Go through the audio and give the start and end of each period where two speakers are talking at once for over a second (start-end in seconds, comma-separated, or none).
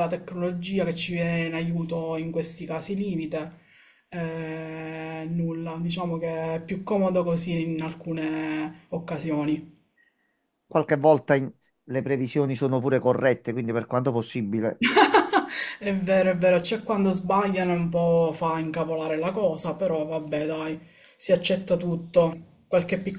none